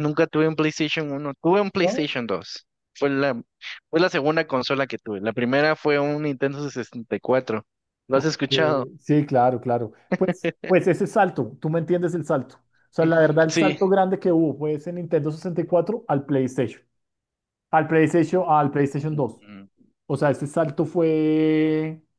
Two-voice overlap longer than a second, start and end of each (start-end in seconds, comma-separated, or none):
none